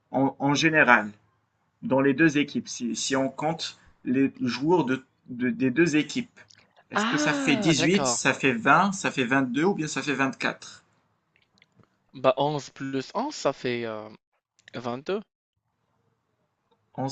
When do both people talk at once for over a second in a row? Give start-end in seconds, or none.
6.9-8.2